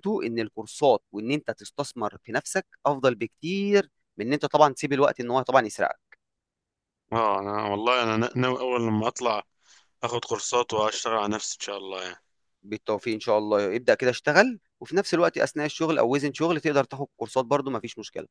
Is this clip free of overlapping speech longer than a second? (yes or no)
yes